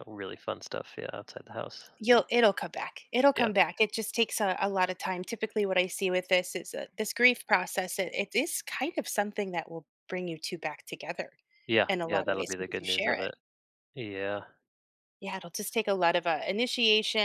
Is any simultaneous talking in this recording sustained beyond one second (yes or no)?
yes